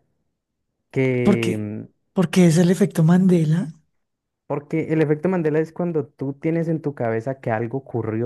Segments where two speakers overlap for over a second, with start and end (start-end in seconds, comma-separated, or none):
none